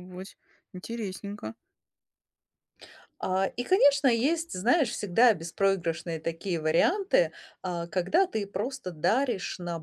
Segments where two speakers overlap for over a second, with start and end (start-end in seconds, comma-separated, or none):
none